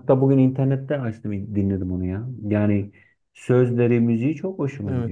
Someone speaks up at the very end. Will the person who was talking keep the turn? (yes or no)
no